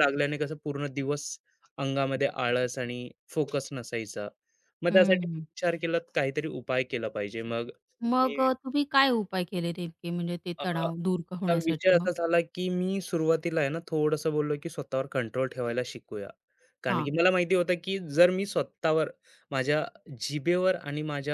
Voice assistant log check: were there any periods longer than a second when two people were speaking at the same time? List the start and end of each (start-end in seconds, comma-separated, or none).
10.6-12.1